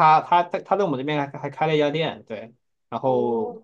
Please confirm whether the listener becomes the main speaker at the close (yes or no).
no